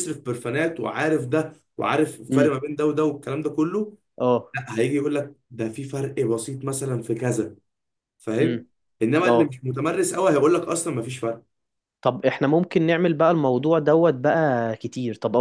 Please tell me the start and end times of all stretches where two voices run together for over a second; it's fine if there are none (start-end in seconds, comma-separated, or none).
none